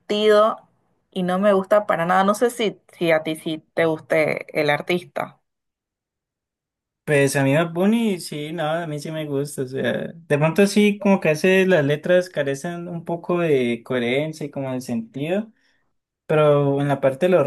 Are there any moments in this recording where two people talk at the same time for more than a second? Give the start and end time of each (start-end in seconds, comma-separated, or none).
none